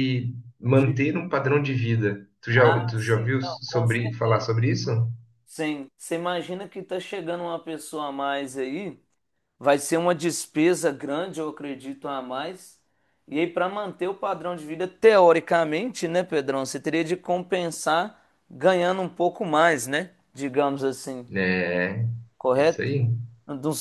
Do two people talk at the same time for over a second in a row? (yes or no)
yes